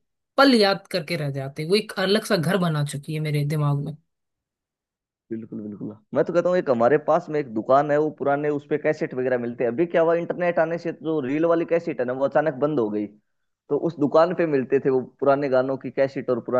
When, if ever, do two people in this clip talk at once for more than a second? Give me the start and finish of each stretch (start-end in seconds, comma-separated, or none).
none